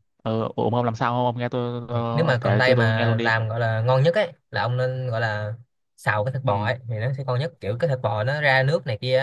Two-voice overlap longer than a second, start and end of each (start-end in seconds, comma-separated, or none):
2.1-3.3